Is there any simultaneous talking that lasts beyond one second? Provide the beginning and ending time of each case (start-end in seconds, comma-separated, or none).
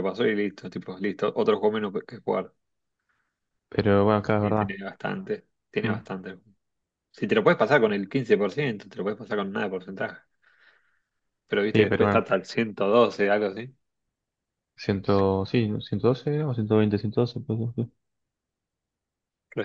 none